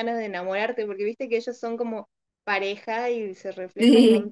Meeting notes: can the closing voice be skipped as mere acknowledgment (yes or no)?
yes